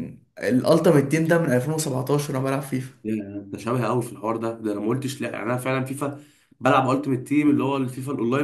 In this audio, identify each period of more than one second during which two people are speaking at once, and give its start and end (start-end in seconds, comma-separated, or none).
none